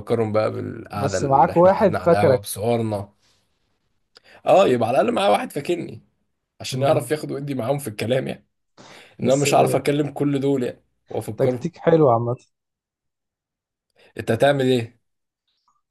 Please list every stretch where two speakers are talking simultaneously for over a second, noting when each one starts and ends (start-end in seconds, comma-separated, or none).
0.9-2.4